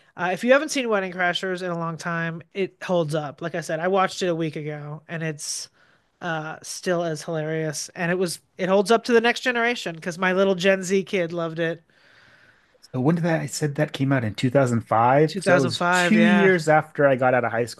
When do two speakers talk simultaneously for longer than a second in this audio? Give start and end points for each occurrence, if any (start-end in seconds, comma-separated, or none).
15.3-16.5